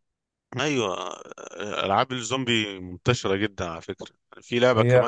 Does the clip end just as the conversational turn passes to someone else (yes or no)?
no